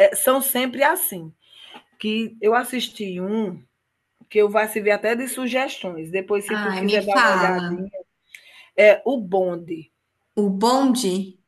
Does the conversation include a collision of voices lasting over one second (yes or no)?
yes